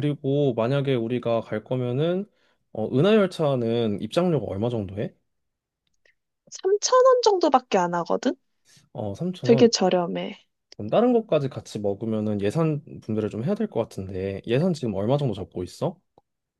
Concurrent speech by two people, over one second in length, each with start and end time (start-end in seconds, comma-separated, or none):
none